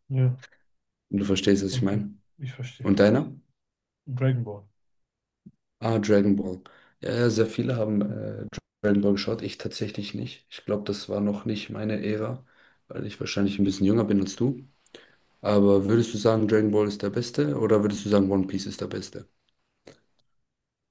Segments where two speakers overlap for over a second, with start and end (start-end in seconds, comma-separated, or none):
none